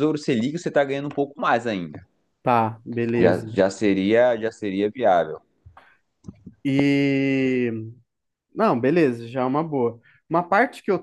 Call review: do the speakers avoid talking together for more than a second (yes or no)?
yes